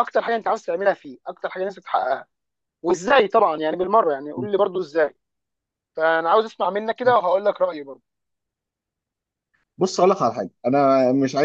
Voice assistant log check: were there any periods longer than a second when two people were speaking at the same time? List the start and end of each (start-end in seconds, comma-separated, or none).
none